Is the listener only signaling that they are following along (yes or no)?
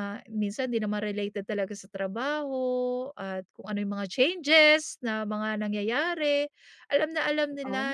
yes